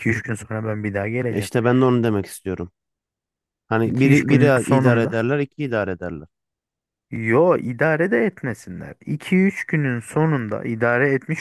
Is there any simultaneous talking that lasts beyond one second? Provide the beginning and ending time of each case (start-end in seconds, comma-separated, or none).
3.8-5.2